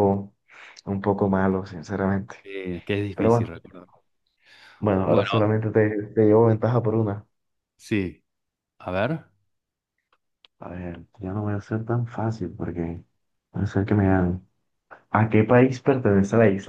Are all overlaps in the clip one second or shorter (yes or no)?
yes